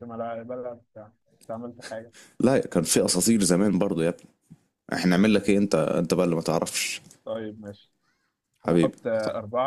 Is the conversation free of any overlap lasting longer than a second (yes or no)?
yes